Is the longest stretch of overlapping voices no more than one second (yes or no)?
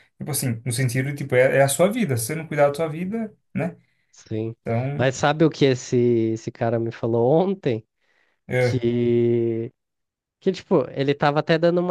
yes